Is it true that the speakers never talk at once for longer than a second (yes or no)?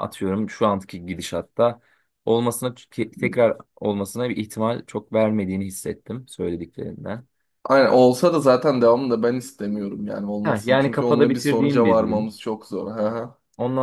no